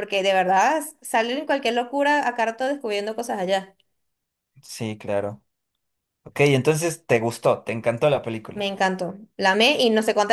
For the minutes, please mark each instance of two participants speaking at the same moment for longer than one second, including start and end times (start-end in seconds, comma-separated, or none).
none